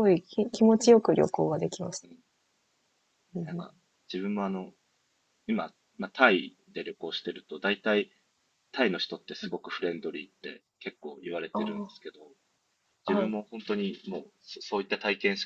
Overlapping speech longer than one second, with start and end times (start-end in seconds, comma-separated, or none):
none